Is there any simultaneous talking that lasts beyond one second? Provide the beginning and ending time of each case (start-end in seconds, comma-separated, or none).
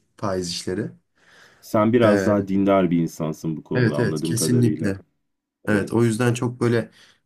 3.7-5.0